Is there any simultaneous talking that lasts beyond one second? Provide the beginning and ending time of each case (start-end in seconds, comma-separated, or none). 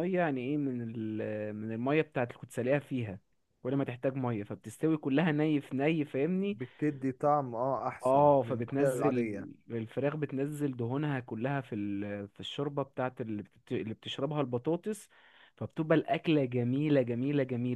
8.1-9.5